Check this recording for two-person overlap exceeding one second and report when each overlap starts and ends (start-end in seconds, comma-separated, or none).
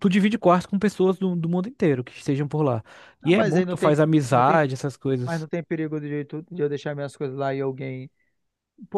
3.2-4.6